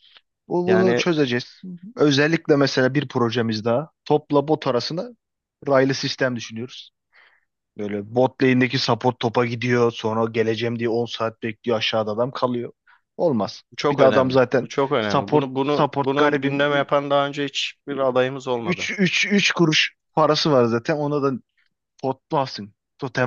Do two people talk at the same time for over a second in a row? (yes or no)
yes